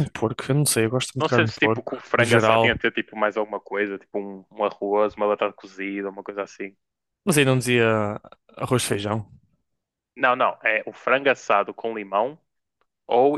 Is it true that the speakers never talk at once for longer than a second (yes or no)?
no